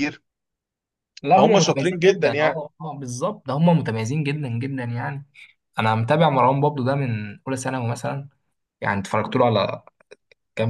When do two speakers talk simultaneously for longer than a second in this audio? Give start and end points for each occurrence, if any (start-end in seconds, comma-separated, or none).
1.3-2.6